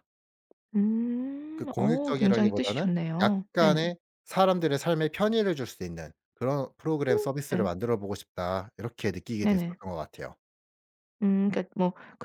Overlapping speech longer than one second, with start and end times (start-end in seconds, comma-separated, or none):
1.6-3.9